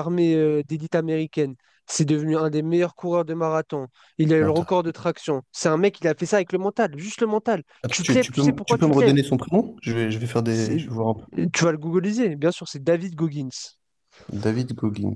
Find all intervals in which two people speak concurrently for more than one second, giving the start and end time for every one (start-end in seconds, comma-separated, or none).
7.8-9.2